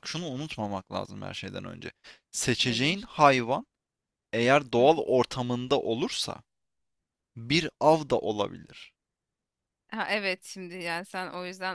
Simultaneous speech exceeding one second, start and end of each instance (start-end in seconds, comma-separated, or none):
none